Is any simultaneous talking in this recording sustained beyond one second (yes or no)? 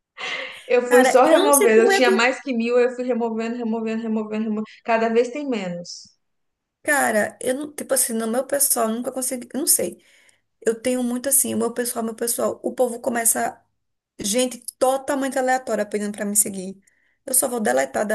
yes